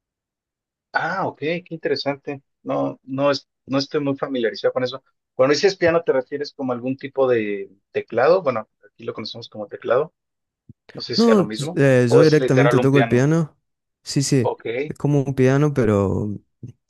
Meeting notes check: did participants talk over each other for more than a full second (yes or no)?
yes